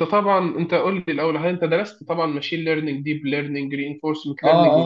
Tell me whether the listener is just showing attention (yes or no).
no